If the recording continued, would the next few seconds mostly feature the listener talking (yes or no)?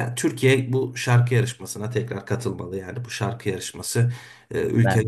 no